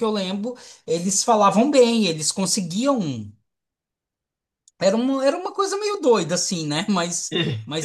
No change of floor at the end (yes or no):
yes